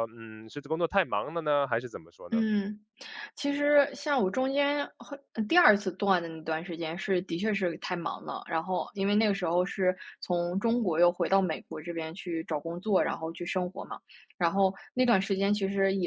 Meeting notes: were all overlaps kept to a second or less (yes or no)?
yes